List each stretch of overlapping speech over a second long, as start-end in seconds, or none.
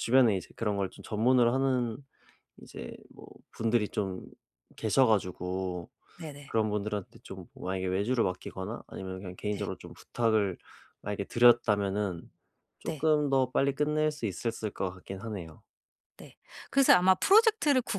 none